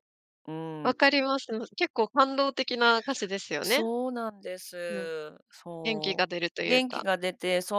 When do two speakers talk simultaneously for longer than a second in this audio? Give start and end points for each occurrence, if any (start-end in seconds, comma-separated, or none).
5.8-7.0